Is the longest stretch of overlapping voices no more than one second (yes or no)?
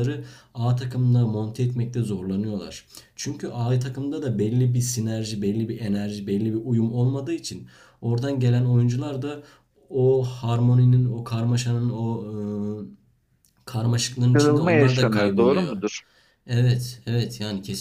no